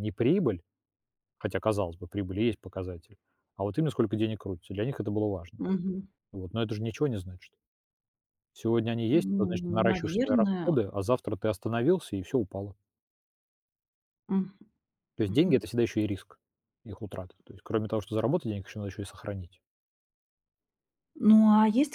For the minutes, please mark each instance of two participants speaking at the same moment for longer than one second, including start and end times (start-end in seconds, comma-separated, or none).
9.1-10.8